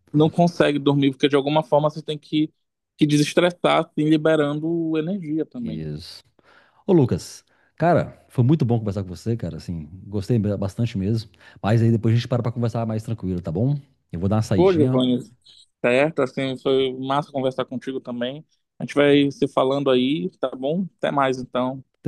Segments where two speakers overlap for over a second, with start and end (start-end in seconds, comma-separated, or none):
none